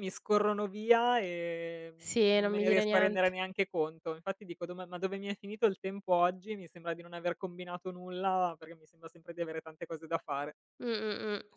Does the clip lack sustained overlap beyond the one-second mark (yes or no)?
no